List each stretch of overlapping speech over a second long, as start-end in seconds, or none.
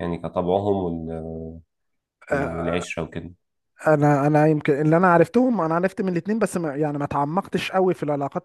none